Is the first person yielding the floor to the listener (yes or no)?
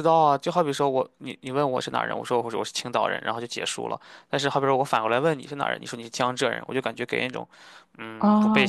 yes